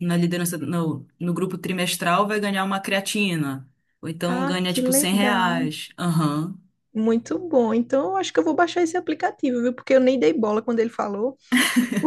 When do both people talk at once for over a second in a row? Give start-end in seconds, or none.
4.2-5.7